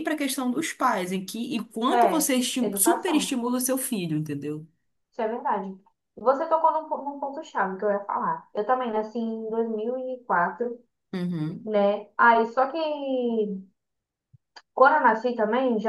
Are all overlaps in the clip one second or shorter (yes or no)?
no